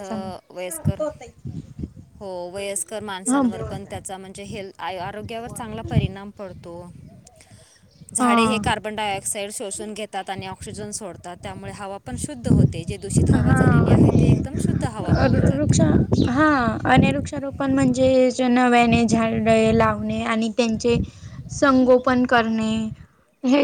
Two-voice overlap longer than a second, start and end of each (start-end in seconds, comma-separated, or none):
none